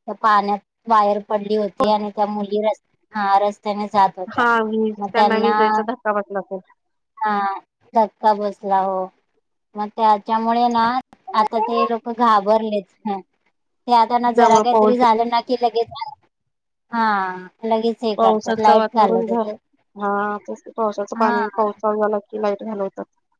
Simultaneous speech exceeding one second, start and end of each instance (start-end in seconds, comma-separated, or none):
18.2-19.5